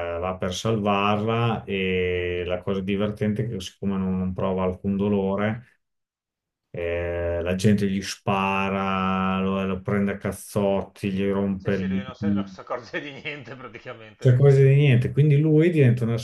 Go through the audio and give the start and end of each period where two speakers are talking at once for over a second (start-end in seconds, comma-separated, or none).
none